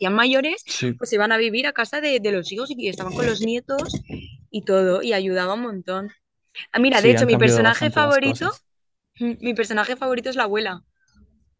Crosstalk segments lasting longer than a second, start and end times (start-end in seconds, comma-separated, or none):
6.9-8.5